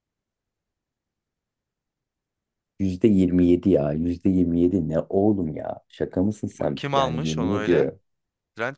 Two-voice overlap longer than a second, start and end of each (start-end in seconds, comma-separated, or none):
6.6-7.9